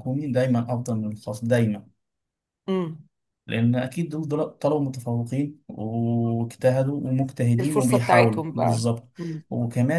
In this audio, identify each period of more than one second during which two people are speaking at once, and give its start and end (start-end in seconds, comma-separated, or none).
7.6-8.8